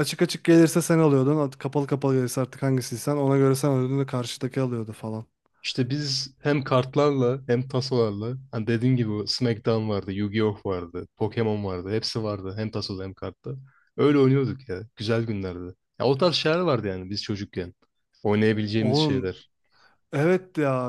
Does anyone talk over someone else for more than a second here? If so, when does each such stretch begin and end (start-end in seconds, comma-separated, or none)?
none